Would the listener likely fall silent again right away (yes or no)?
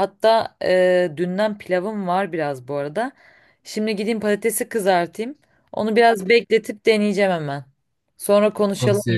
no